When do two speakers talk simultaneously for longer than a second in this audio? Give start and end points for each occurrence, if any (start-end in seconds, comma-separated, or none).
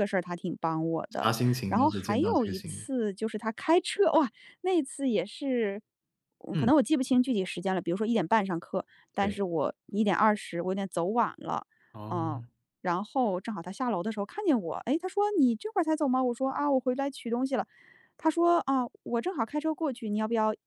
1.2-2.9